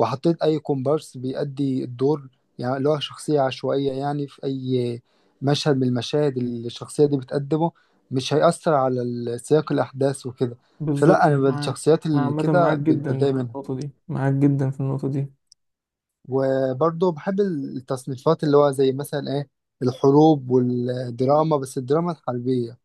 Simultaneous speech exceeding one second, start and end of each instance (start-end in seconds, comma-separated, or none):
10.9-13.6